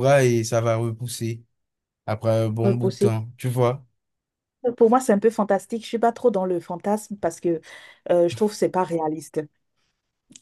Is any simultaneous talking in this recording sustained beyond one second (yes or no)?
no